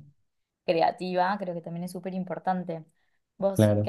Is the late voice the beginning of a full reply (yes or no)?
yes